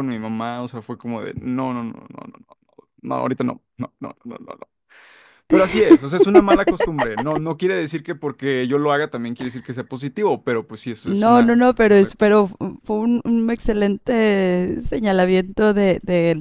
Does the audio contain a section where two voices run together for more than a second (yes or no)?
yes